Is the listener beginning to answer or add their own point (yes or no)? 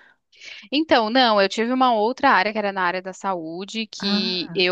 no